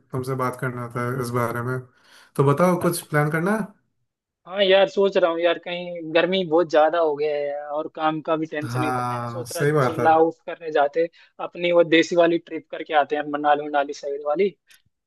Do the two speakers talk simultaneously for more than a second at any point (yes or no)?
yes